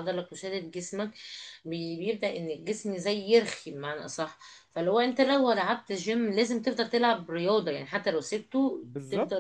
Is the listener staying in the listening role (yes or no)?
no